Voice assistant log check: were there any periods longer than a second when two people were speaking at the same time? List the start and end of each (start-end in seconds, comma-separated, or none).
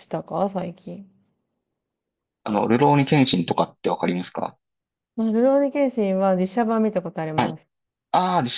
none